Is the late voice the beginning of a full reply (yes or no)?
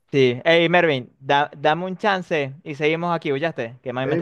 yes